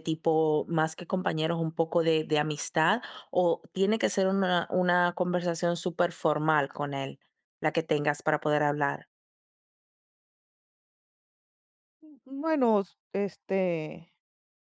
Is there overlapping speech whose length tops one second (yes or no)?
no